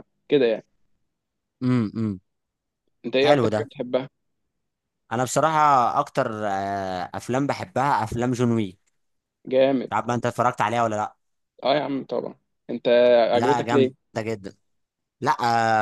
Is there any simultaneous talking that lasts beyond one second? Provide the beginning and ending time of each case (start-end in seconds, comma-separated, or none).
none